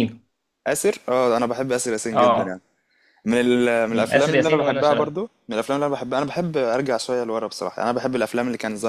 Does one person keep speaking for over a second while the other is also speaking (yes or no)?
yes